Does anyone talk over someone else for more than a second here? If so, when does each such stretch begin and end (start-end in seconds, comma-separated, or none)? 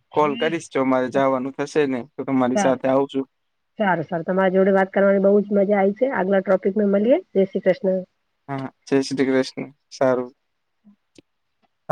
none